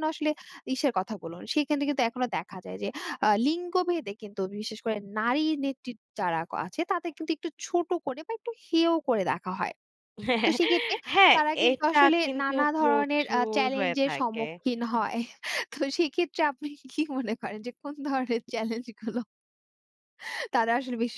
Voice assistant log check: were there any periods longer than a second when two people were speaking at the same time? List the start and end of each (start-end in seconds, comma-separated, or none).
11.3-14.5